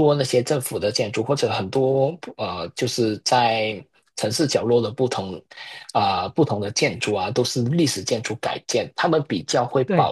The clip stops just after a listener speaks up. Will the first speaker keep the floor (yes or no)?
yes